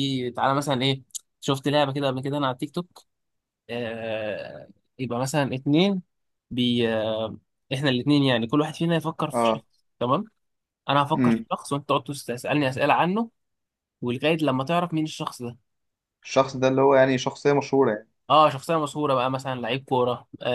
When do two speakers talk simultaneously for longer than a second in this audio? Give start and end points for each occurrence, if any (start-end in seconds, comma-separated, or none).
none